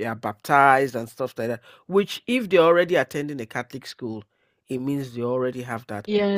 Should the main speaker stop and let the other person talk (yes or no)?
yes